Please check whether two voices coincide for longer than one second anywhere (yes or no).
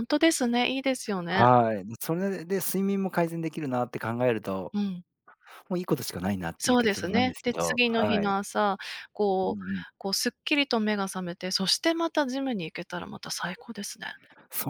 yes